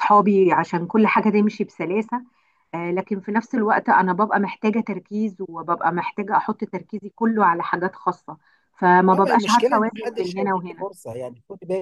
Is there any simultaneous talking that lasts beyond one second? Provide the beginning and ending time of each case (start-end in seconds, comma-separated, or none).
9.1-10.9